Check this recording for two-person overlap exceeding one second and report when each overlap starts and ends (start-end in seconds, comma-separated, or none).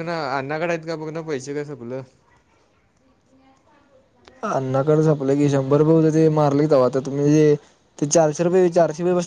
none